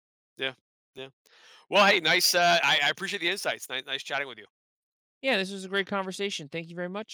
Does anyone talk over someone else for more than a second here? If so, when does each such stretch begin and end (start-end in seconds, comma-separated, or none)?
none